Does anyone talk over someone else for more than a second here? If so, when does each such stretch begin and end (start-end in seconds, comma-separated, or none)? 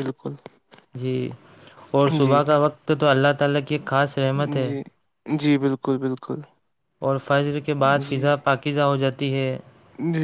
none